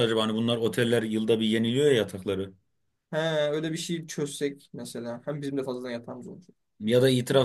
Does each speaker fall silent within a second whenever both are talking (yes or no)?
yes